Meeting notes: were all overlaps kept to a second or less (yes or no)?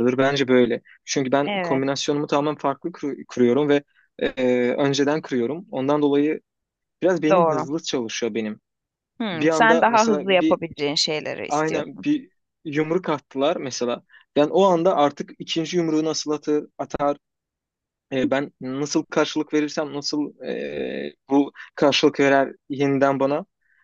no